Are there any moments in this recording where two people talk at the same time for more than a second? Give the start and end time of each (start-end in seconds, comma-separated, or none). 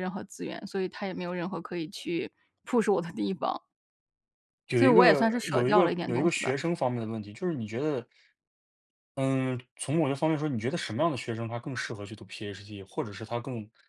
4.8-6.5